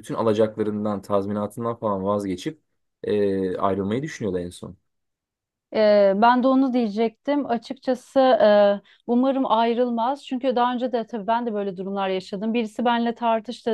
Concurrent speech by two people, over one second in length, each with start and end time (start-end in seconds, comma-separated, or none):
none